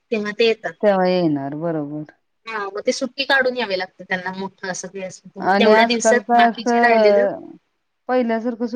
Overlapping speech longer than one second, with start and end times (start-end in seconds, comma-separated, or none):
5.5-7.3